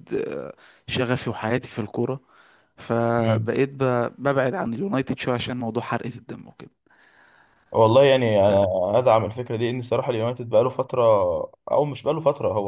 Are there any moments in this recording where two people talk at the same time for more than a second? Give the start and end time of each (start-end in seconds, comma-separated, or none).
none